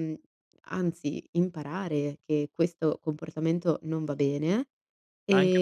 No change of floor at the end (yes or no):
no